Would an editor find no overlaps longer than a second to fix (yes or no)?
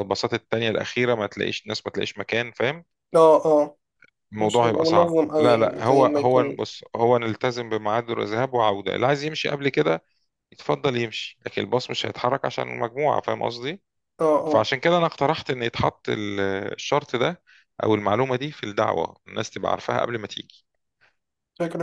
no